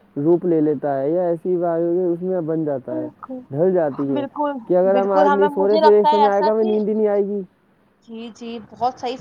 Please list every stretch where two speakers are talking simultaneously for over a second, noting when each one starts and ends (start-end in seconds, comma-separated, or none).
4.9-6.7